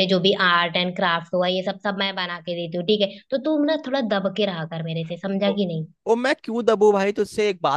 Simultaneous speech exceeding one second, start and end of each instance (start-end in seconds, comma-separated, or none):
none